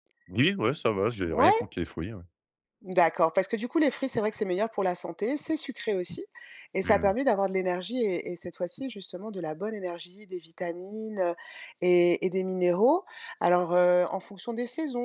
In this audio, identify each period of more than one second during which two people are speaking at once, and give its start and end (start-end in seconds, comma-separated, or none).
none